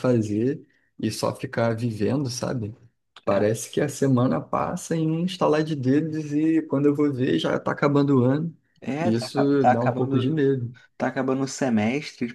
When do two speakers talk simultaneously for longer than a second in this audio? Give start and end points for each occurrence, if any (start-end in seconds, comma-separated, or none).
9.0-10.4